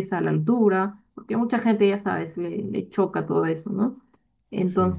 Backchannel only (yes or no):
yes